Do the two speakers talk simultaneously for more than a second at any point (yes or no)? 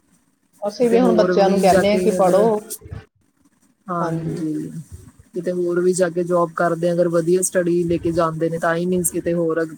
yes